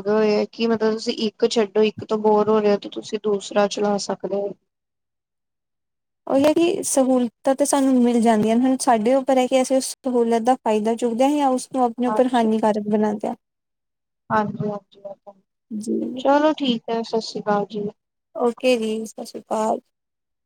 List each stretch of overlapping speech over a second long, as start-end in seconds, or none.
none